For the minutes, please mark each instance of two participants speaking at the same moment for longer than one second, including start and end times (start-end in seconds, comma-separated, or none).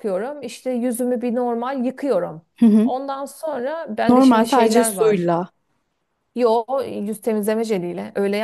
4.1-5.3